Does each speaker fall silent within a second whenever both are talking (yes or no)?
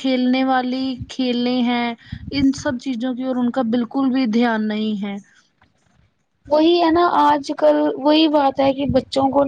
yes